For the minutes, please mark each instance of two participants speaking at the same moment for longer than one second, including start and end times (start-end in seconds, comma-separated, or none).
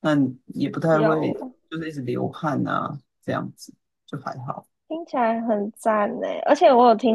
none